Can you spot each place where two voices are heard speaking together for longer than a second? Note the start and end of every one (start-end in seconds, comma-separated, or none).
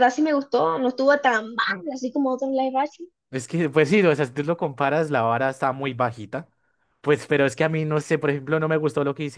none